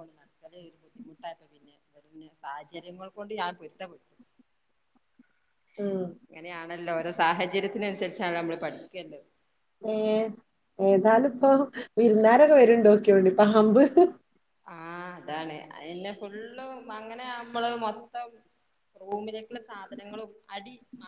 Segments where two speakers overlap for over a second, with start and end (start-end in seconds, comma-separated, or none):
none